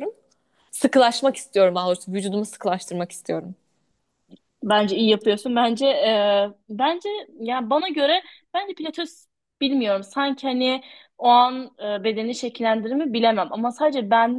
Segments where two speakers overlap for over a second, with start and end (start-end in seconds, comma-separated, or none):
none